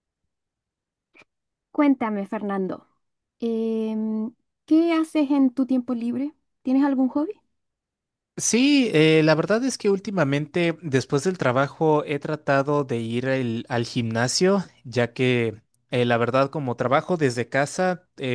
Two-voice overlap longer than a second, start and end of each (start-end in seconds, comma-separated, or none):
none